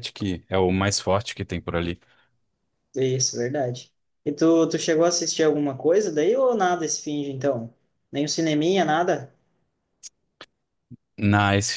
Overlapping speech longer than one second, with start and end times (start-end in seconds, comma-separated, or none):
none